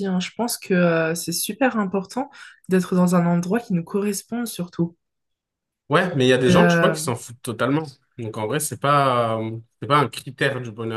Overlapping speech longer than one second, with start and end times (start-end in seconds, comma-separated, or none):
none